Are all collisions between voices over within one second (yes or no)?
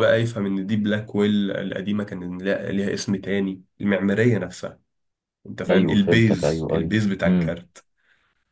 no